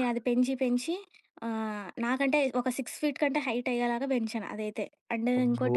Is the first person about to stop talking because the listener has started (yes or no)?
no